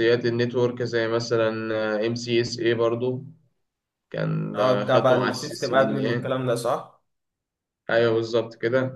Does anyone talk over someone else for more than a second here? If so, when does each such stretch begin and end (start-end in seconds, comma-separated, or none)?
4.5-6.3